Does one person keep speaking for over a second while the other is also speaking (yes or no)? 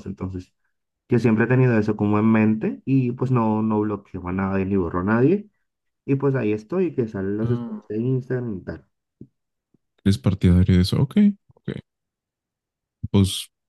no